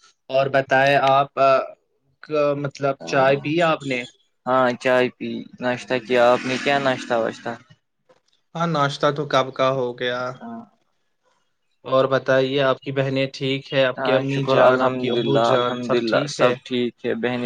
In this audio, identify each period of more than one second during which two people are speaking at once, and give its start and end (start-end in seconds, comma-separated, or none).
14.0-16.5